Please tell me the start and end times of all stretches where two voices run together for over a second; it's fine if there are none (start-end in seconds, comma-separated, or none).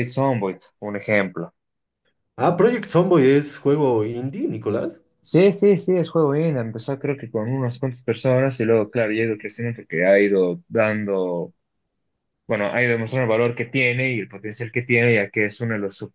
none